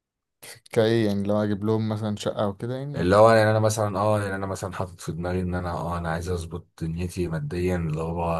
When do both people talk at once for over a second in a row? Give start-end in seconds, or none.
none